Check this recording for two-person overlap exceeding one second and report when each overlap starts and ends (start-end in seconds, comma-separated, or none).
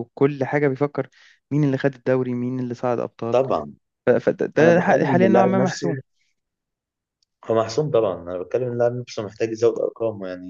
4.6-5.9